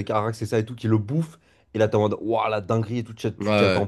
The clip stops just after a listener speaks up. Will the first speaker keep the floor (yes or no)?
yes